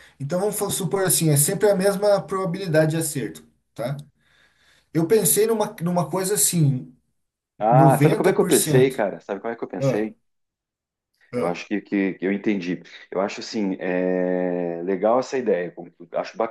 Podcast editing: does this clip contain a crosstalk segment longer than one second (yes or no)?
yes